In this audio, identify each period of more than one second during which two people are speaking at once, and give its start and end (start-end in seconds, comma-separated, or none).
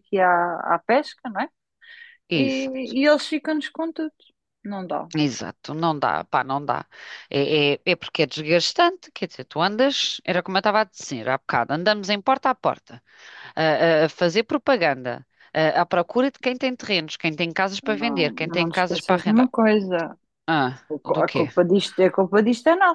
17.8-19.5